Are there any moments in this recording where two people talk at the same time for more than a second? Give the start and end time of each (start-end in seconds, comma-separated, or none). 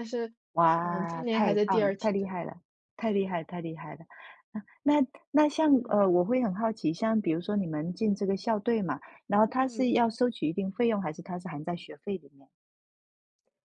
0.8-2.4